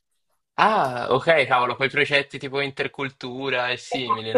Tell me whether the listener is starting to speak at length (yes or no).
yes